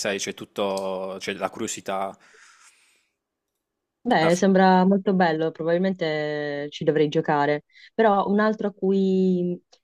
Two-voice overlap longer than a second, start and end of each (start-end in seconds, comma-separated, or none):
none